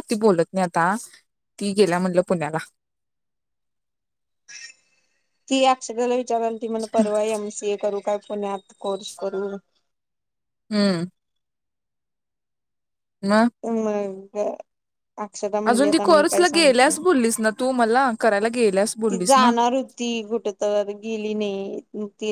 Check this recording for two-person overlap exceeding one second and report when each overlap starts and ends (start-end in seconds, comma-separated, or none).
15.7-17.0